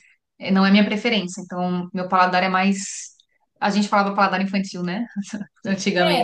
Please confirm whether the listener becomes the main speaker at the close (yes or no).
yes